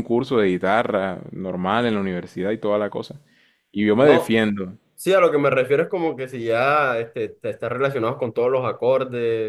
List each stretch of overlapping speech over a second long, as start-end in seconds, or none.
none